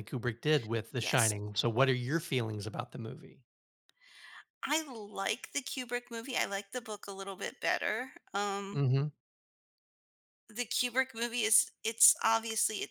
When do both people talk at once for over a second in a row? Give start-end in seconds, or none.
none